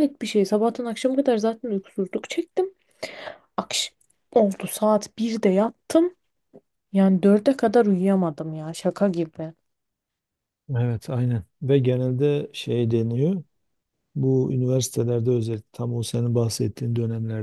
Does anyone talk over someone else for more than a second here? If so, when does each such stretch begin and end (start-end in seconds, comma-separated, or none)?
none